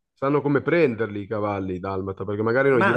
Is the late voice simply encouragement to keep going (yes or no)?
no